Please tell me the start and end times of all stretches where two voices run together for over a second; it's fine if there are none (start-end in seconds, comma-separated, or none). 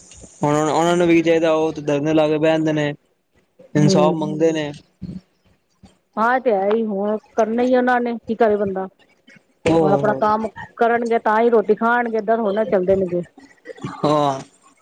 none